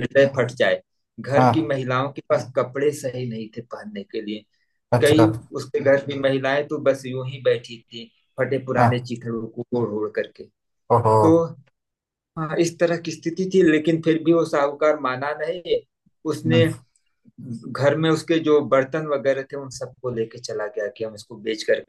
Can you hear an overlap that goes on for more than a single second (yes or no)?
no